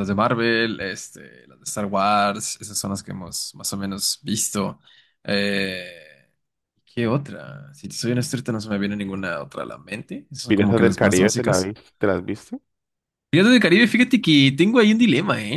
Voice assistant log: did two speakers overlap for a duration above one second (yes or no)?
yes